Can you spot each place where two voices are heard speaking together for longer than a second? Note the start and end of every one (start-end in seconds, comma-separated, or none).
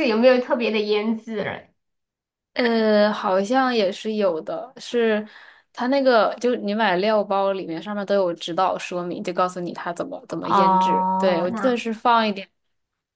10.4-11.8